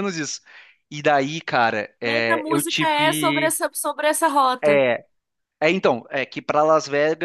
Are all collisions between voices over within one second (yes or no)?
no